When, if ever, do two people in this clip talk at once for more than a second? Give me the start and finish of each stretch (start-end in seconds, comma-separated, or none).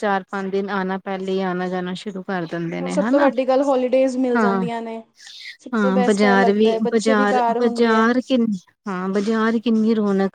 5.7-8.1